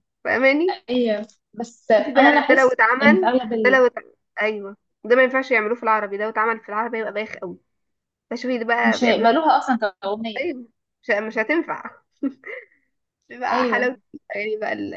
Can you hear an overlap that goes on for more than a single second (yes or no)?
yes